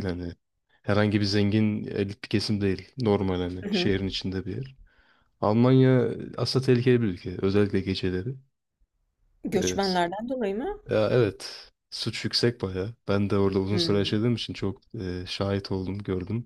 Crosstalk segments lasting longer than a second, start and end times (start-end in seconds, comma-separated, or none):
none